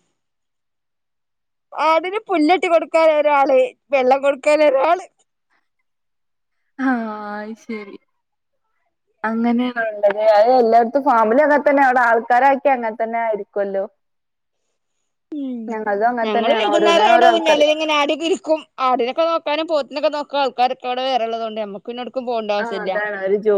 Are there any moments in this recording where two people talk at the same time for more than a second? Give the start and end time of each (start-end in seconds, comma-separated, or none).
16.2-17.6